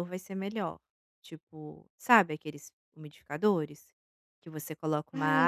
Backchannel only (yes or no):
yes